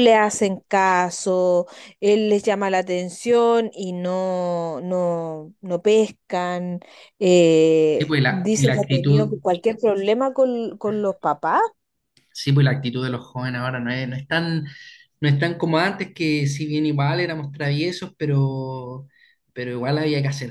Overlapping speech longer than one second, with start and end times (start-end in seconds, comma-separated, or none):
8.0-9.3